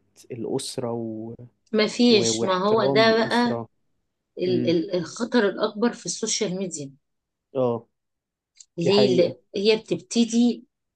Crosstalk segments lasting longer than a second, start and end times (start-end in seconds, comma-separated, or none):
2.1-3.6